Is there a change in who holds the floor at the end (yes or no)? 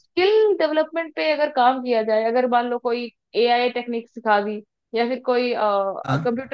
no